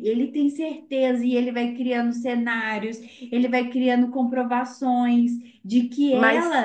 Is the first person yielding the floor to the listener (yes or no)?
no